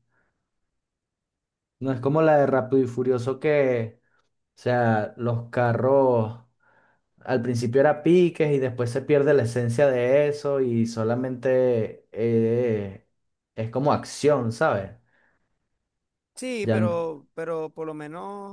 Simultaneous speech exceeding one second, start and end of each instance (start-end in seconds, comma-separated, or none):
none